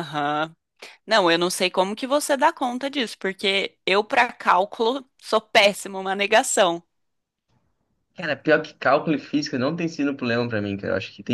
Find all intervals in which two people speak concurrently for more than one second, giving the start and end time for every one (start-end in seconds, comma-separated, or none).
none